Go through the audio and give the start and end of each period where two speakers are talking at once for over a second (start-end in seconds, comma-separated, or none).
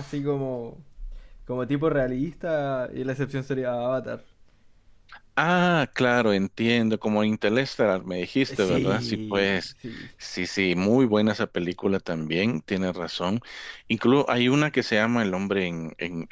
8.5-9.8